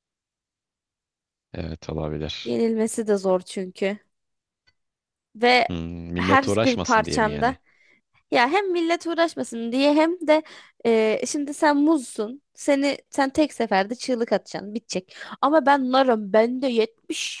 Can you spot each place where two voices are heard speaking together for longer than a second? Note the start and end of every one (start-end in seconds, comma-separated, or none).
6.2-7.5